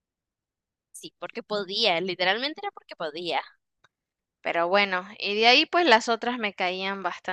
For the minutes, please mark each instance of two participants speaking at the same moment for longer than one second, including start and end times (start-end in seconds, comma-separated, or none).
none